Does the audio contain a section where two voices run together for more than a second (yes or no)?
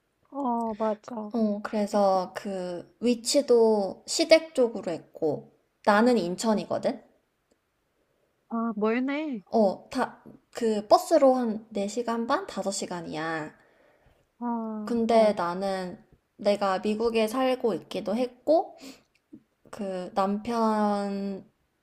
no